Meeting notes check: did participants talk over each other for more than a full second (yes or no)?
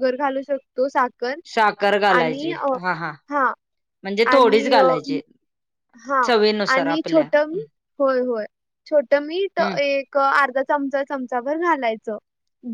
no